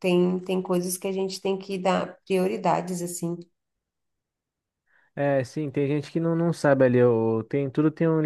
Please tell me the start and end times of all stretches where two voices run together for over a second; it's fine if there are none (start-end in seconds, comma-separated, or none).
none